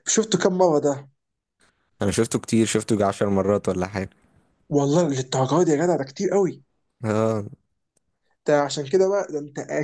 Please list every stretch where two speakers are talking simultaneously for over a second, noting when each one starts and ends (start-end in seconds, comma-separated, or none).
none